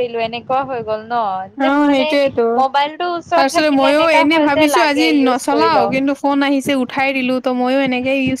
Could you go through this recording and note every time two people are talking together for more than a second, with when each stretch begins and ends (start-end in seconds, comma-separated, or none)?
3.4-5.9